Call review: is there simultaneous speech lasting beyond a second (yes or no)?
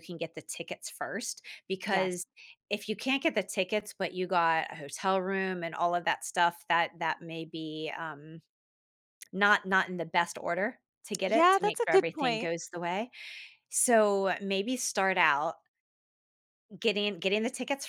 yes